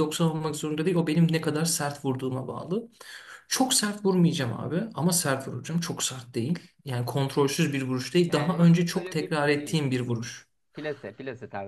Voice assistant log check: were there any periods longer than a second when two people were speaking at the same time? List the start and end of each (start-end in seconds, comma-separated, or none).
8.2-9.8